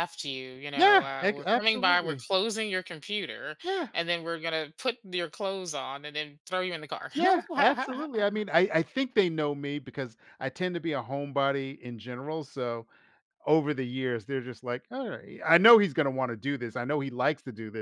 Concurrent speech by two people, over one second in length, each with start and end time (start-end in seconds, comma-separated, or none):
0.8-2.3